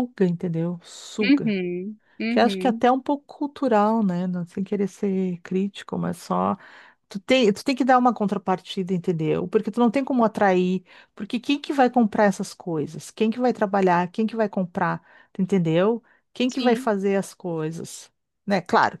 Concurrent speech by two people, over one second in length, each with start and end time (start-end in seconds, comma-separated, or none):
none